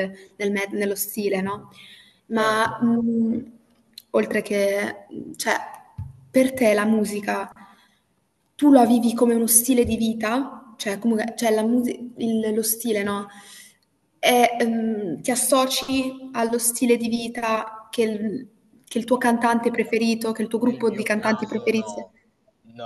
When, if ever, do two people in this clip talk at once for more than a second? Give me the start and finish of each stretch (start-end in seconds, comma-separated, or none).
20.6-22.1